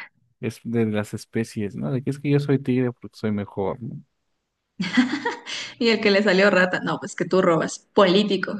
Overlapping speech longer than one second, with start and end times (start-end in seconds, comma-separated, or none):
none